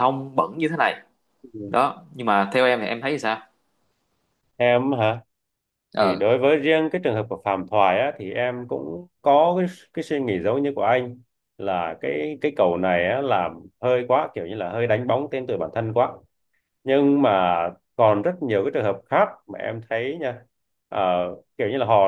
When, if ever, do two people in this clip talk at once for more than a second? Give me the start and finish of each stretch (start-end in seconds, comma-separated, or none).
none